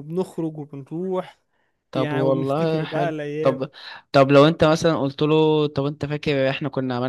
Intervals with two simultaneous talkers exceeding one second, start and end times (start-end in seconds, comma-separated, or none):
1.9-3.7